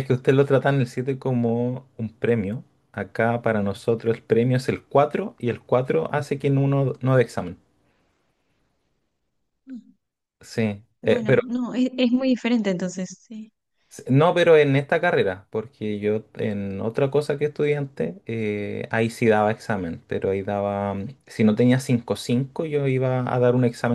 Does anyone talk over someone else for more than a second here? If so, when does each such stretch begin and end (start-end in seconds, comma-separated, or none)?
none